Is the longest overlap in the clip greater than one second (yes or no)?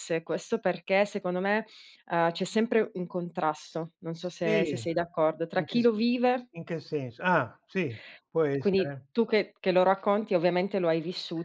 no